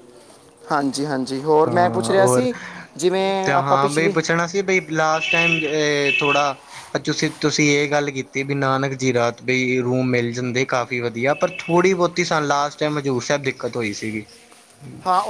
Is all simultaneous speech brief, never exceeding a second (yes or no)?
yes